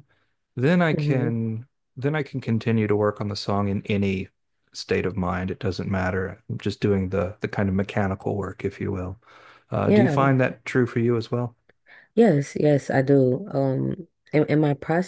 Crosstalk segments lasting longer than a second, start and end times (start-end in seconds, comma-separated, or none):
none